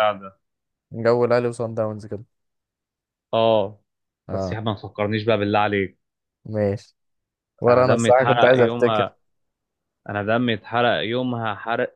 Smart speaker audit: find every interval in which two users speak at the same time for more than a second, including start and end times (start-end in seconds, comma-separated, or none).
7.7-9.0